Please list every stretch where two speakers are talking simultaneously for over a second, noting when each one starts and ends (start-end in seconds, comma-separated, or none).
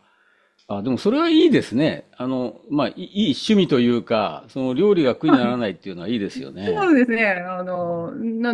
none